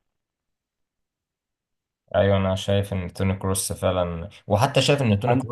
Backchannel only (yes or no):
yes